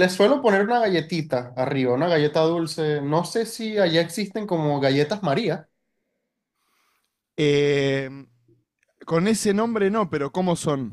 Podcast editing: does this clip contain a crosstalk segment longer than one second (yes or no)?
no